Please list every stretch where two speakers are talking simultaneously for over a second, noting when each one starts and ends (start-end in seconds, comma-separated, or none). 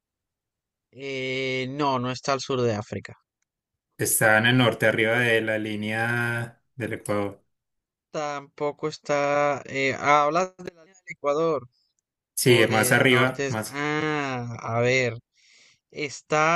12.4-13.8